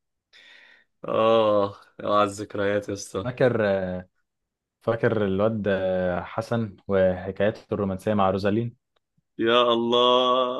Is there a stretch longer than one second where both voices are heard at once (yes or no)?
no